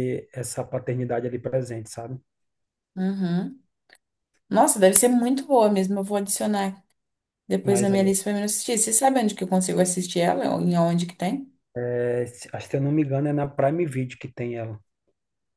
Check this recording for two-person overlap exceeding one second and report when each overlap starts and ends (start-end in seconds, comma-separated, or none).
none